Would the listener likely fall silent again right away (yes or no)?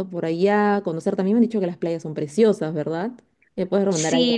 no